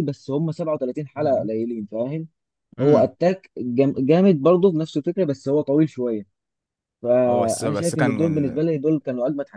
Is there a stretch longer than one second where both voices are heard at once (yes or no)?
yes